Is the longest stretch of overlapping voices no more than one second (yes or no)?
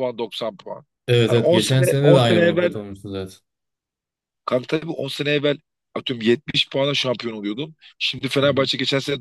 no